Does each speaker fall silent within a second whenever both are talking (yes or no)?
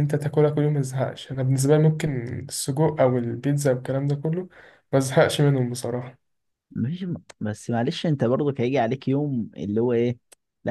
yes